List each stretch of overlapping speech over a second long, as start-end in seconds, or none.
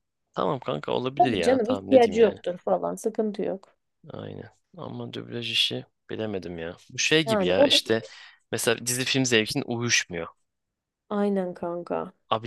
1.2-2.4